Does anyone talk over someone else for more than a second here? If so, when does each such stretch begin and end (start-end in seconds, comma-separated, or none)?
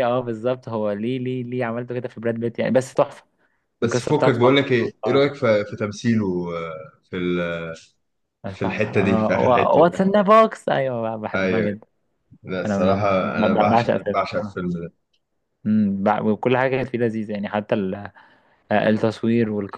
3.8-5.4, 8.5-9.9, 12.7-14.6